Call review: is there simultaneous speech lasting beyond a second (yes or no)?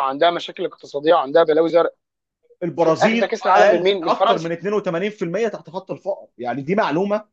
yes